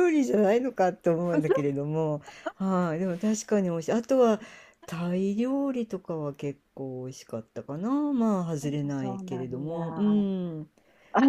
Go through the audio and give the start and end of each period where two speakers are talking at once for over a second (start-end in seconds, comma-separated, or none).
8.6-10.3